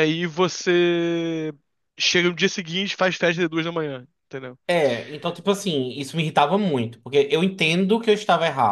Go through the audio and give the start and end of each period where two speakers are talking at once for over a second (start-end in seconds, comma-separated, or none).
none